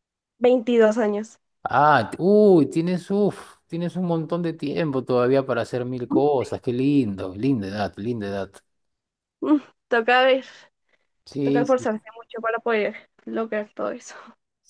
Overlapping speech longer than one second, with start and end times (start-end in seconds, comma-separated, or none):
none